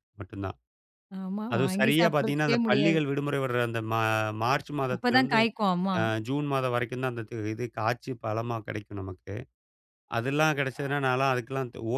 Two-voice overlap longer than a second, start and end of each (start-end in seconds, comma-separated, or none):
1.5-3.0